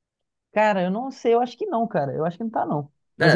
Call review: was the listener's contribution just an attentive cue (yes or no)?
no